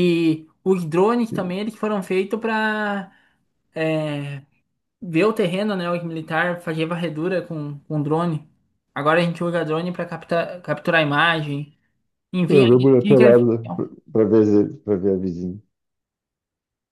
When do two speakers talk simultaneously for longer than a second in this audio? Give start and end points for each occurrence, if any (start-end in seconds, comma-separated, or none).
12.4-13.8